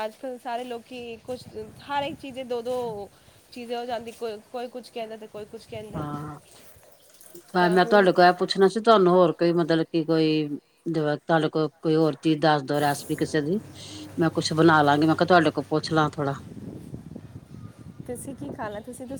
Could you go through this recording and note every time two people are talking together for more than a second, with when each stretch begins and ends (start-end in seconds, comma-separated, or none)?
none